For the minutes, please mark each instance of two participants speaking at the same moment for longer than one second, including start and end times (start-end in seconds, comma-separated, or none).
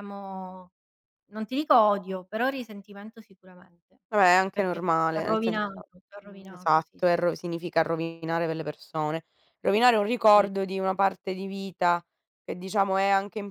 4.5-7.2